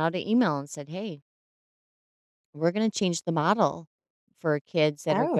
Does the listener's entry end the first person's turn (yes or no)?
no